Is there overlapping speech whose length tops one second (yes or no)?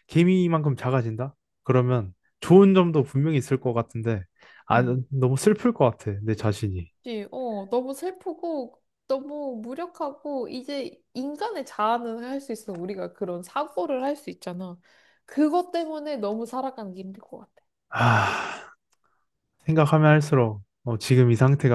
no